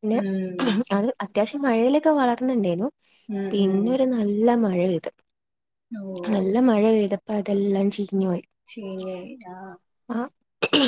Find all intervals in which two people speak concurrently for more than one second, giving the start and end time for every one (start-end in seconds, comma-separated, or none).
none